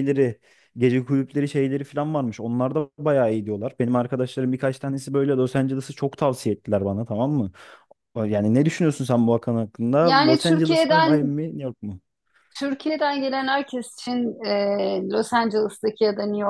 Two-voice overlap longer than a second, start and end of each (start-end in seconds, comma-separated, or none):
10.0-11.4